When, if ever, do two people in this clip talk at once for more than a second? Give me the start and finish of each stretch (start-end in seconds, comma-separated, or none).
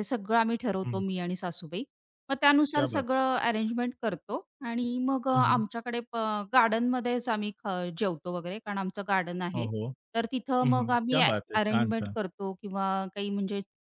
10.6-12.2